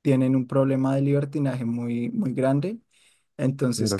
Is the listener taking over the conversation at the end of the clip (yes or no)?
no